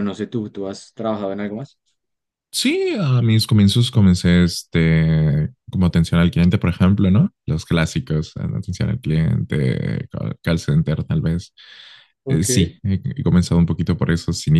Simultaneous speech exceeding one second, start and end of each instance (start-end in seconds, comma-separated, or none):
none